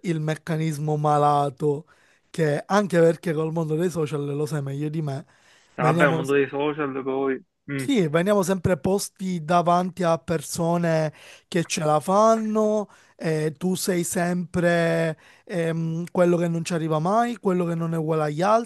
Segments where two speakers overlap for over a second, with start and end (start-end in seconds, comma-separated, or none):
none